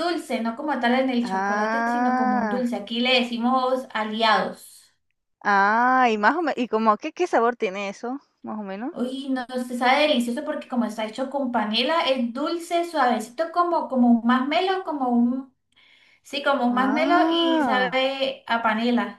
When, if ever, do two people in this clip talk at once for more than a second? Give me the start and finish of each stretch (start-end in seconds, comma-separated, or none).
1.2-2.7, 16.7-18.0